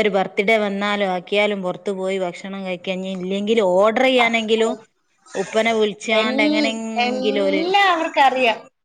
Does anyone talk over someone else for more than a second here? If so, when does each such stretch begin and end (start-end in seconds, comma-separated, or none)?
6.2-7.6